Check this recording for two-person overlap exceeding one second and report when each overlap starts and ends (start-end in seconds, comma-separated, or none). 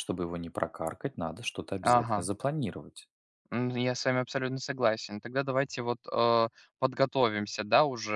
none